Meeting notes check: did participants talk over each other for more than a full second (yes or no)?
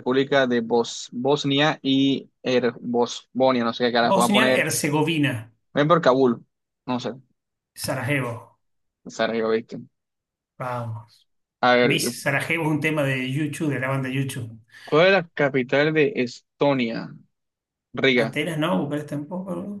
no